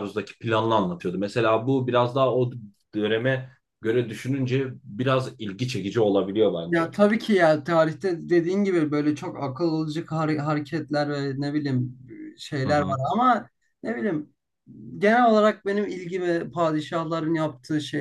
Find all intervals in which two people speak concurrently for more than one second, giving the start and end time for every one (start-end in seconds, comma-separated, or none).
none